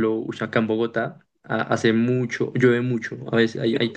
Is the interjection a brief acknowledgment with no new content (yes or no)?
yes